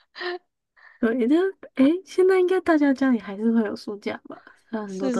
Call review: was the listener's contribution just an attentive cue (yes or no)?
no